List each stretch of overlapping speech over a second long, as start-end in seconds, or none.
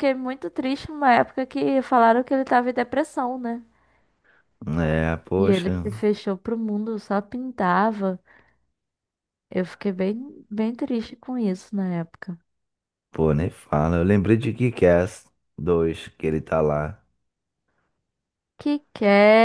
none